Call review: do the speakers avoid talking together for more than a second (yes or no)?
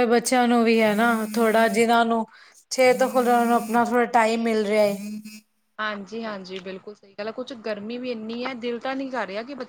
yes